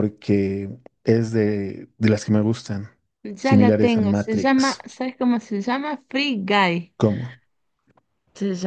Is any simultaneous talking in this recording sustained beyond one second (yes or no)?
yes